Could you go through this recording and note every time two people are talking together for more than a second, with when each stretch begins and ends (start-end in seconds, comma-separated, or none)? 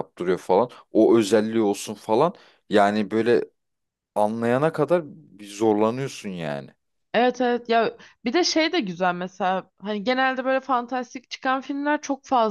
none